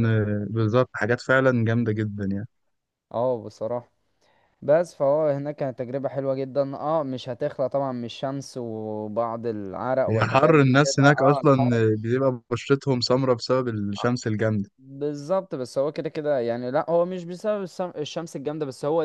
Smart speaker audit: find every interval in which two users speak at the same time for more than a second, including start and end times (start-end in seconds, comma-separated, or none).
10.1-11.8